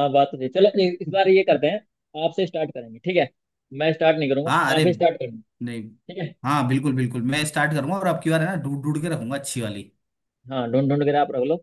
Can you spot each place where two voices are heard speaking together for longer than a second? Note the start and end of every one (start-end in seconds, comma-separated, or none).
none